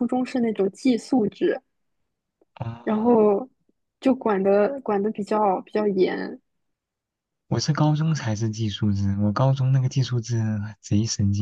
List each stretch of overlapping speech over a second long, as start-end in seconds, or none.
none